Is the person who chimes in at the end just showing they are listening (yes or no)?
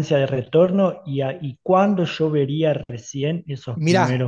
no